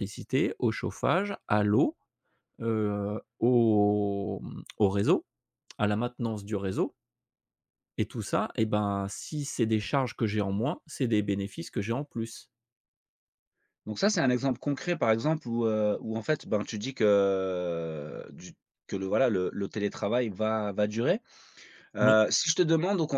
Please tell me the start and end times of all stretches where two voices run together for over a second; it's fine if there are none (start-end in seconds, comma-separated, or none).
none